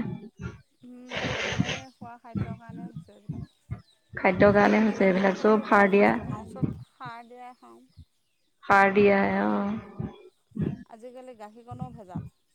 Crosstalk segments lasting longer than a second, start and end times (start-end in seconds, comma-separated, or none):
4.2-6.1